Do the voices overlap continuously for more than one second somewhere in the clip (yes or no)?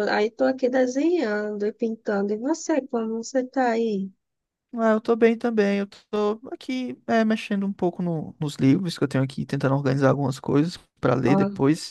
no